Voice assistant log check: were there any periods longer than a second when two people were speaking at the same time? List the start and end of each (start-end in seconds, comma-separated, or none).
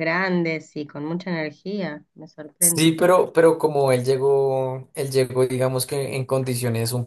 none